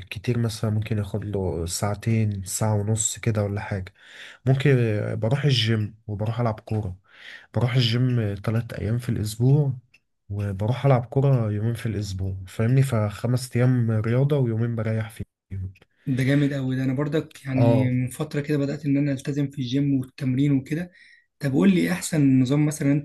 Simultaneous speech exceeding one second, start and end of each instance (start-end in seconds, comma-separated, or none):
none